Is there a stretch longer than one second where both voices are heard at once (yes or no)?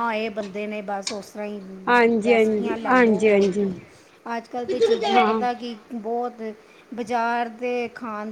yes